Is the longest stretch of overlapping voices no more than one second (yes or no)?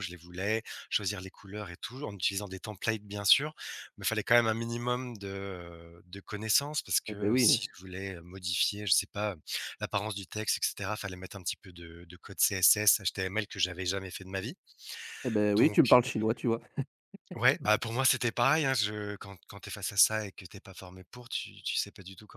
yes